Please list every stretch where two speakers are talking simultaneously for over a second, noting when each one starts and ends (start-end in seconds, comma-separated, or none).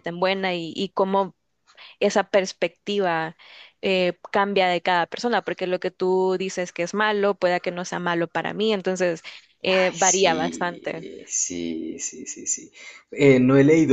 9.6-11.1